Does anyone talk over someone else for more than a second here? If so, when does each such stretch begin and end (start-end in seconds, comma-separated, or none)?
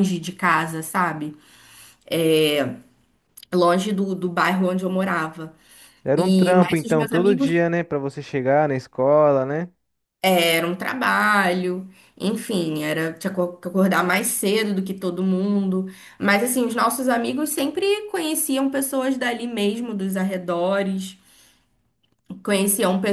6.2-7.5